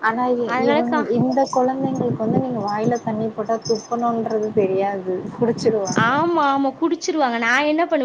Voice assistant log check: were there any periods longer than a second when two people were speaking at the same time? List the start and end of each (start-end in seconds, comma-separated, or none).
none